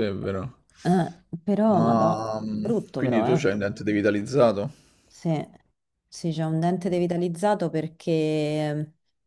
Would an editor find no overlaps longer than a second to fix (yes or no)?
no